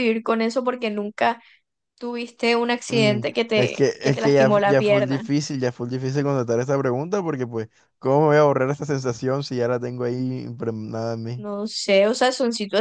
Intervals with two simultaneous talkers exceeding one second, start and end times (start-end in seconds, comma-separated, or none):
2.9-5.2